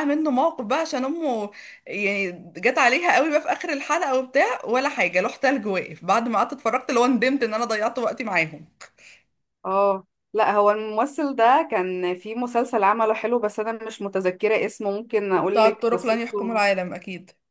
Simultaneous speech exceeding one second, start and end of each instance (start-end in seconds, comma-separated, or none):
15.4-16.6